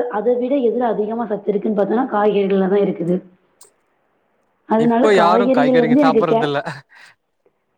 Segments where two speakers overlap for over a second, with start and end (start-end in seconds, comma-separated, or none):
4.8-6.4